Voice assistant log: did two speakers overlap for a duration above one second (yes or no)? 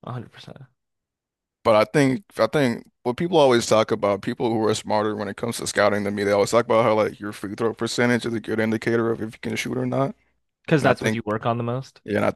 no